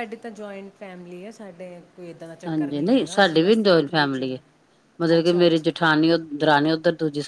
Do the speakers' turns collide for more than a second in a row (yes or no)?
yes